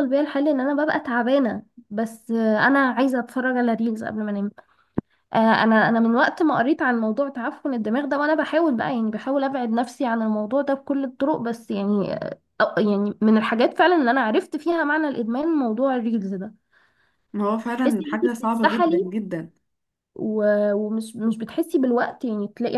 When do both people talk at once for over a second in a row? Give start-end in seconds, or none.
17.8-19.1